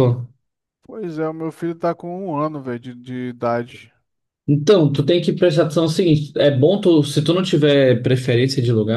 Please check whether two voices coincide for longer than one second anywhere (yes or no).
no